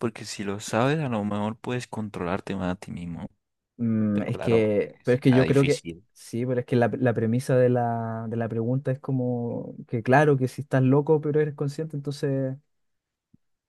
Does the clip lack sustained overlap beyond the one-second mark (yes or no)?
no